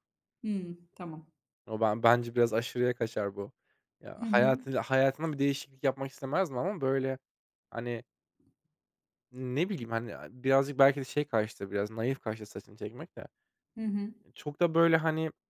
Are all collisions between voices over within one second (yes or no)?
yes